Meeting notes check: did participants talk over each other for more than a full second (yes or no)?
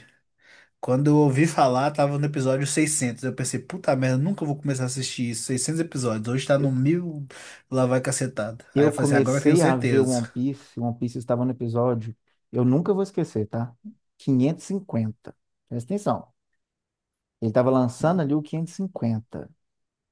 yes